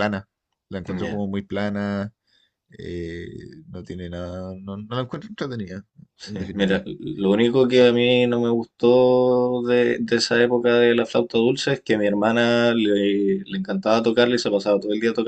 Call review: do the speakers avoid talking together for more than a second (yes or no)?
yes